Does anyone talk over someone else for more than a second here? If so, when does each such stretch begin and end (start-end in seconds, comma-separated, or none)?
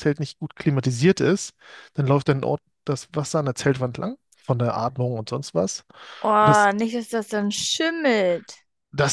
none